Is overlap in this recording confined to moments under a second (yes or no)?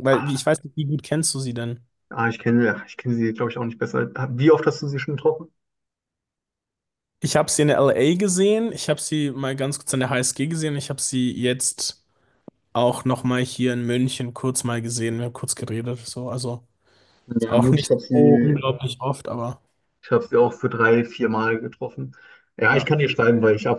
no